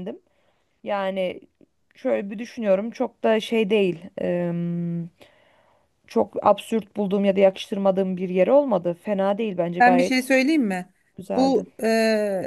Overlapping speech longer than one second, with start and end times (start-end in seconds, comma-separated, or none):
none